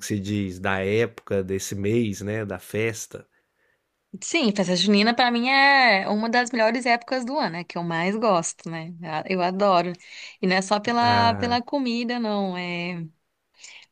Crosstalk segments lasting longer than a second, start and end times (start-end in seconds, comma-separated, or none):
none